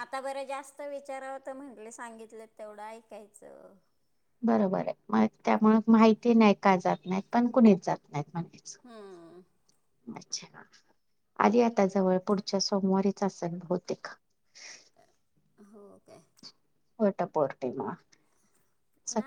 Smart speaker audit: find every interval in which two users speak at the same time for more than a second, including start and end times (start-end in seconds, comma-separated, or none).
none